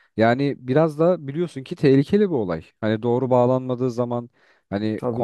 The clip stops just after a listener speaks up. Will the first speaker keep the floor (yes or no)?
yes